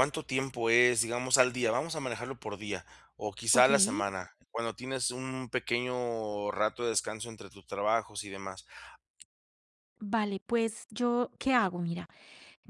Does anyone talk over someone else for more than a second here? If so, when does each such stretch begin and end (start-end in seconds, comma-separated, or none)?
none